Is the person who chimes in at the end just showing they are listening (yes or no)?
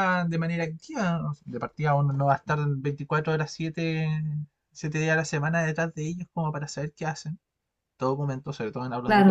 no